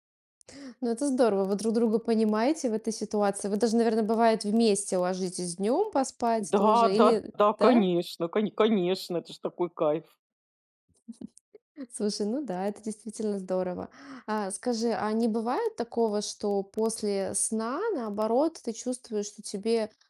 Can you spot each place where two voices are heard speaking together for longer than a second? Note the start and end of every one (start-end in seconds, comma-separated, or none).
6.4-7.8